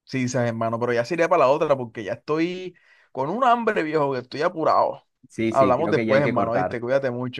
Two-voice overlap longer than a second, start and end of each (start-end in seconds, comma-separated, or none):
5.5-6.8